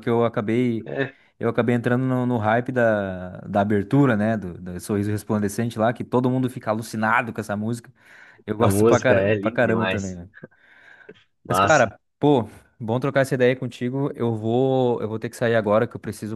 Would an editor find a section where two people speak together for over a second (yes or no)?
yes